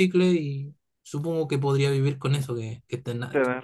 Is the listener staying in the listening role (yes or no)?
no